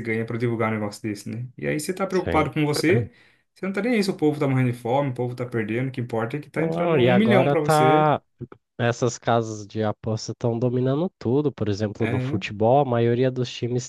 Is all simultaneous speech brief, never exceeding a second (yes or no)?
no